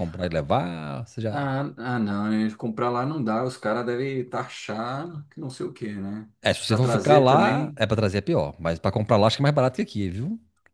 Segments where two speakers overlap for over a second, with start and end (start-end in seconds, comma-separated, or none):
6.4-7.8